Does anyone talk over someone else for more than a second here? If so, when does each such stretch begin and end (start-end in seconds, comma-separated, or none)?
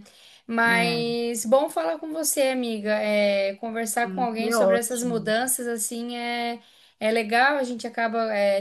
4.0-5.3